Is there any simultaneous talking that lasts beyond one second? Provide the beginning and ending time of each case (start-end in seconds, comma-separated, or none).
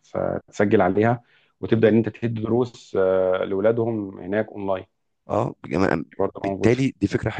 none